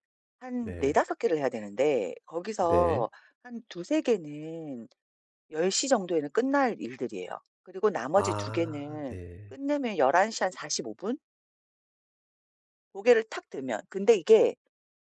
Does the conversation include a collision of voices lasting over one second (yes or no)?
yes